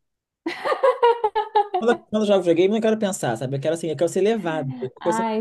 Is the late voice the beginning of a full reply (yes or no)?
yes